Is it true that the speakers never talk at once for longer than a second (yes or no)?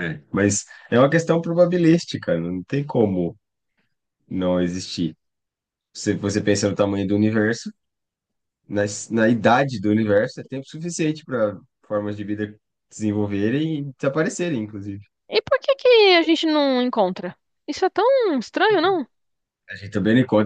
yes